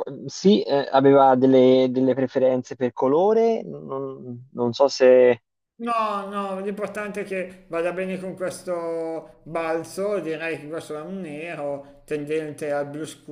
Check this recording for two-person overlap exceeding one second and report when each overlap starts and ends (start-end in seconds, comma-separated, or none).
none